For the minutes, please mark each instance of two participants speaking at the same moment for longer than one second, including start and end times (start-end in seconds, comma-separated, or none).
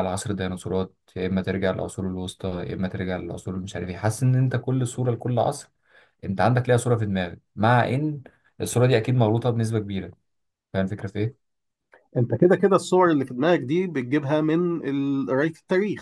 none